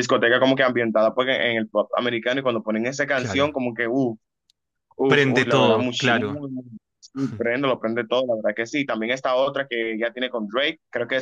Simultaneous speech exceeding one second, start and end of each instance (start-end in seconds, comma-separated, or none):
5.1-6.4